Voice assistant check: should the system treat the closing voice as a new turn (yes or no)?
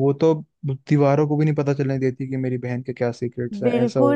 yes